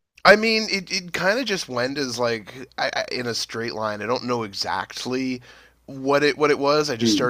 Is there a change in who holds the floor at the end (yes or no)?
no